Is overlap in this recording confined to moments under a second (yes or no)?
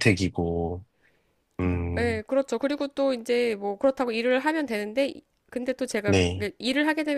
yes